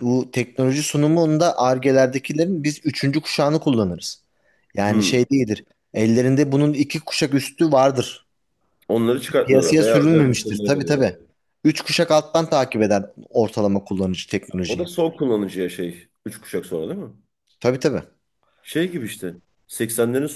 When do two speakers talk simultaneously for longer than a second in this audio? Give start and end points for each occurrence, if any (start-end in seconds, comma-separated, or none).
9.4-11.2